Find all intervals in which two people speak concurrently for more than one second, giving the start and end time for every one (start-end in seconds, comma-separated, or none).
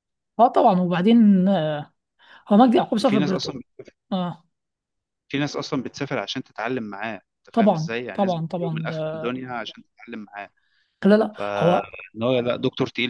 7.5-9.3